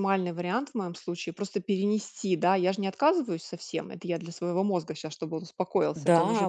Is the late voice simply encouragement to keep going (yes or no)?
no